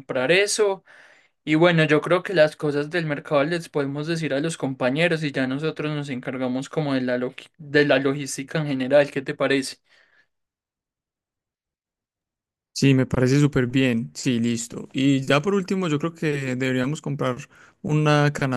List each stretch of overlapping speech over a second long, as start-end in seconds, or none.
none